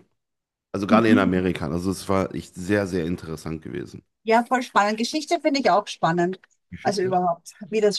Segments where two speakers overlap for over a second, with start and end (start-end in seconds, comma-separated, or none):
none